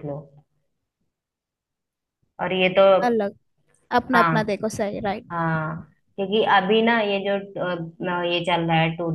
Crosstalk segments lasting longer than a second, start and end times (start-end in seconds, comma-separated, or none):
none